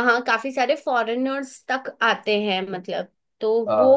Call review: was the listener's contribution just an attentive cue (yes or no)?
yes